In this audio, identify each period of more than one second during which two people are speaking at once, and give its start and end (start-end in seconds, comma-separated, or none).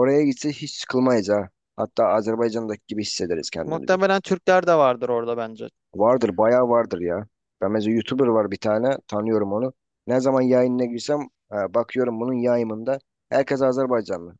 none